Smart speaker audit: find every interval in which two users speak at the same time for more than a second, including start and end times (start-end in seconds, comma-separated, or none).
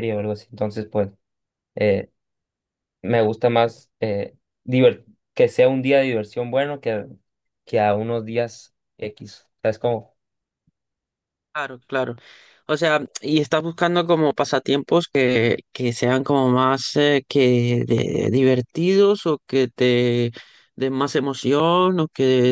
none